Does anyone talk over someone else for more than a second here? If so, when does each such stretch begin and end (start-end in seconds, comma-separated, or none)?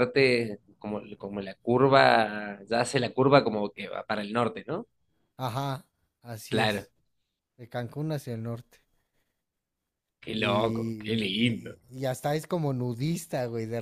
10.4-11.8